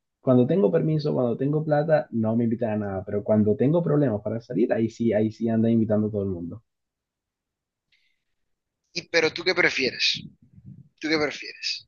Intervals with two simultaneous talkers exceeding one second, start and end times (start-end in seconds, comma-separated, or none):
none